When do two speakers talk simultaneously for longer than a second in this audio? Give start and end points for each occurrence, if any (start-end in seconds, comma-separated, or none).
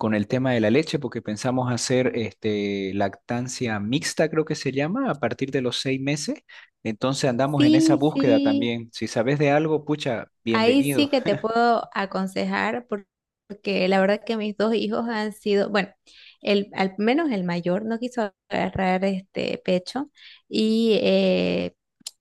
7.5-8.7